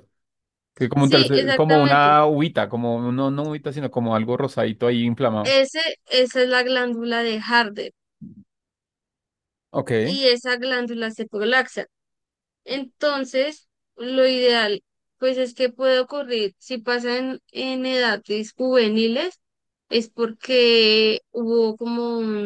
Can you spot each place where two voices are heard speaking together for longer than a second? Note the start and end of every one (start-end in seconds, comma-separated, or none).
1.0-2.2